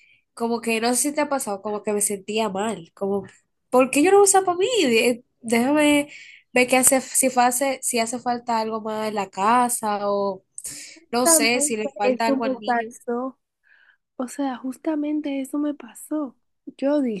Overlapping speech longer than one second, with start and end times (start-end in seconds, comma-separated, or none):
11.1-12.9